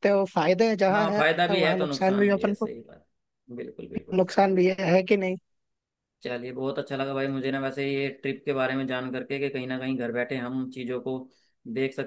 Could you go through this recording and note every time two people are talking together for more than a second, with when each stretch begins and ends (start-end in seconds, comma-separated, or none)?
0.9-2.7